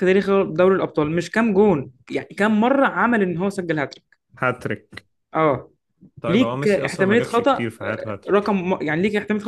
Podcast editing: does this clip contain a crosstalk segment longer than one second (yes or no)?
yes